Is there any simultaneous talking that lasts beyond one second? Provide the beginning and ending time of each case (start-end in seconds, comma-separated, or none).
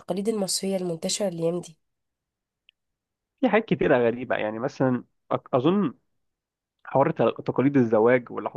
none